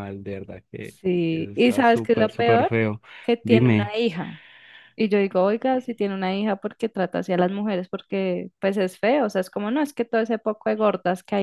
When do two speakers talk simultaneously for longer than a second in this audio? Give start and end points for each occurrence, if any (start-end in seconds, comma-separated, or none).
0.8-2.7